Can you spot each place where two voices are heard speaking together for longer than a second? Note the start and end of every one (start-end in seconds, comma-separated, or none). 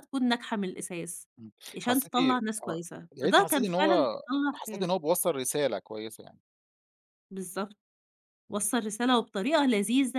1.8-4.9